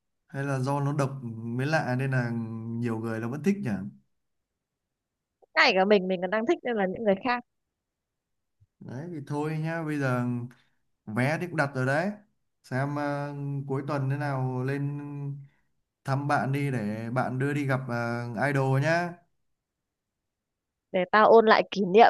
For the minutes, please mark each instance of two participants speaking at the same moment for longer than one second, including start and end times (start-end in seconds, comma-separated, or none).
none